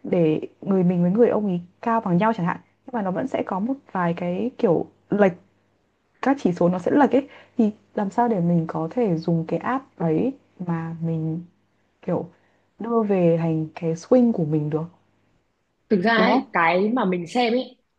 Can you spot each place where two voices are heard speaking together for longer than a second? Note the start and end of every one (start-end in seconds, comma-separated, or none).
none